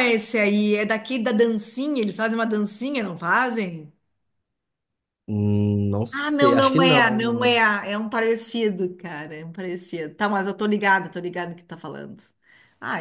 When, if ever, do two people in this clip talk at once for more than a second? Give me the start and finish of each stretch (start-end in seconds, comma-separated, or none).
6.1-7.6